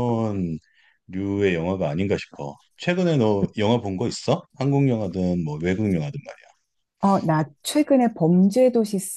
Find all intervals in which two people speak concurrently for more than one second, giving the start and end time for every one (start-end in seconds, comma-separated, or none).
none